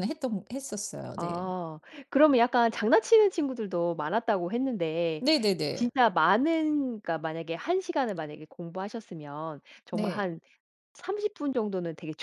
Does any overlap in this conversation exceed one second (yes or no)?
no